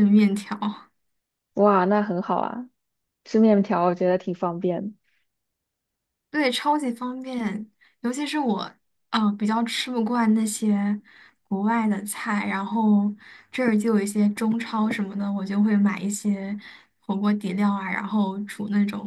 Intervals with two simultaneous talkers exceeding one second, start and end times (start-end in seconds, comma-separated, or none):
none